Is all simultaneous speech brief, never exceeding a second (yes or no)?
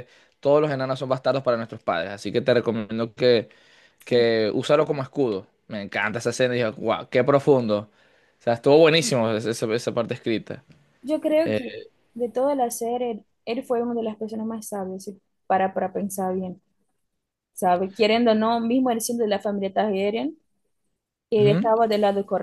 yes